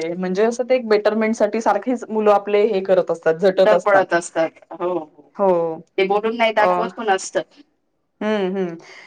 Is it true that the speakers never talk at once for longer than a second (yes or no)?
yes